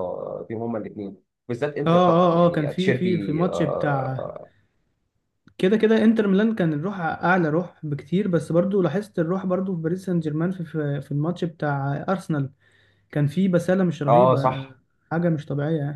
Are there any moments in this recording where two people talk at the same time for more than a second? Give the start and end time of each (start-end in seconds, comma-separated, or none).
1.9-4.3